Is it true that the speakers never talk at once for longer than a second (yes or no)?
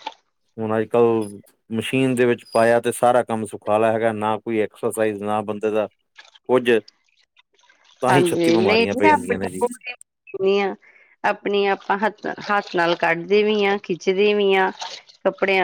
no